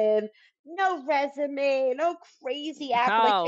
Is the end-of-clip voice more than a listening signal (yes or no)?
yes